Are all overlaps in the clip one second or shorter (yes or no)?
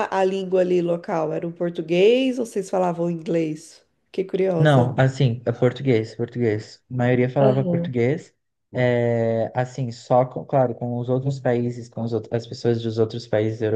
yes